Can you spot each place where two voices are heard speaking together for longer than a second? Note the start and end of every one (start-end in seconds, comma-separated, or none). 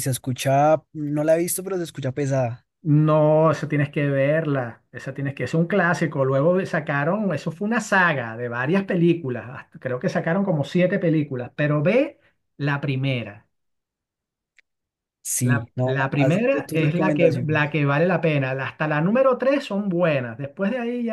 15.4-17.8